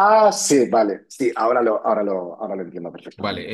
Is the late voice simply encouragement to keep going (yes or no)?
no